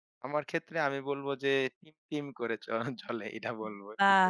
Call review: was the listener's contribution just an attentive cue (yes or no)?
no